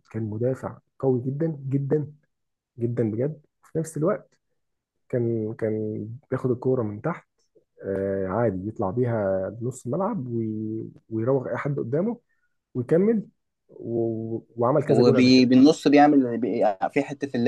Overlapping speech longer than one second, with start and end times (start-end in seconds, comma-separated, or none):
none